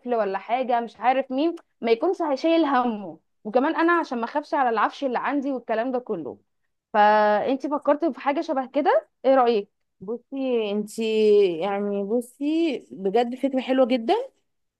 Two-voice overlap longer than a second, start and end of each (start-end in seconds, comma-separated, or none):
none